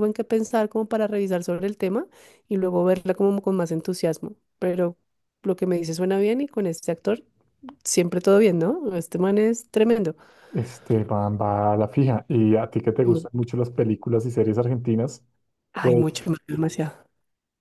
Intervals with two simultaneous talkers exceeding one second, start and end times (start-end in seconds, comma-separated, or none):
none